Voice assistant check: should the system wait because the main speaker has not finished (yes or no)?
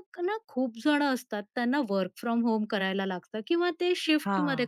yes